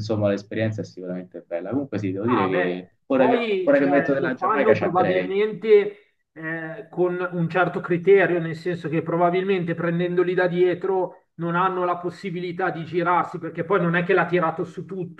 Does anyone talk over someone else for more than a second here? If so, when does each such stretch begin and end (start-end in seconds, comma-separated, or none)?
2.2-5.4